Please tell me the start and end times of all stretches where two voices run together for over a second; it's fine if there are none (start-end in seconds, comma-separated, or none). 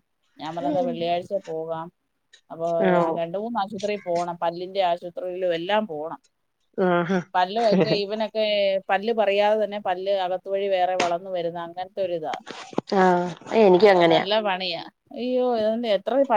none